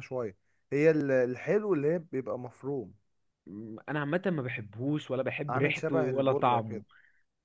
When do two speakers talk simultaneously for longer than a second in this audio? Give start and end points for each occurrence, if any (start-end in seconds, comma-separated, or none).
5.5-6.8